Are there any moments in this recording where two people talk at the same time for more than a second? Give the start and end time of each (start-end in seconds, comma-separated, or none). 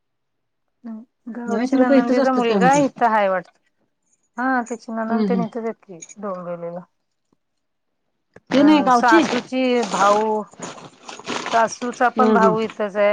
1.5-2.9